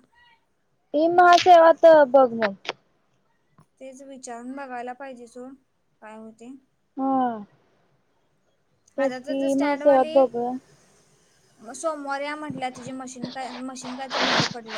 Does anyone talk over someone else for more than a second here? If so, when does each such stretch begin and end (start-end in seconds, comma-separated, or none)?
9.0-10.5